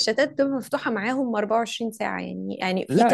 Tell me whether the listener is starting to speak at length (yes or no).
no